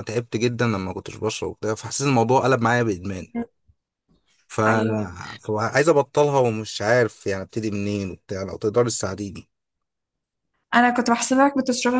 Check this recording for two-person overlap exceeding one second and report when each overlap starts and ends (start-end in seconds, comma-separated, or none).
none